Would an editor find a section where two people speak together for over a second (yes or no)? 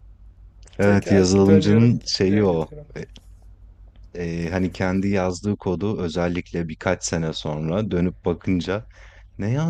yes